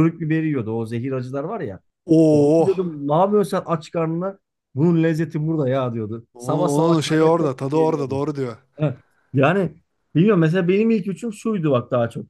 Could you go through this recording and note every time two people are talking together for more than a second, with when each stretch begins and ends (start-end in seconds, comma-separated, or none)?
6.3-8.2